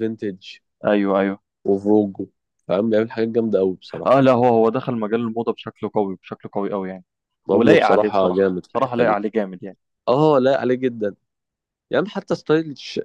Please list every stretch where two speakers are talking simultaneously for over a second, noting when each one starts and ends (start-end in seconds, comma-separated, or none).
7.5-9.2